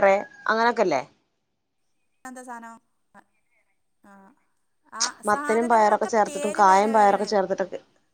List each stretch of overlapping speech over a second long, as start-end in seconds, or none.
5.3-7.3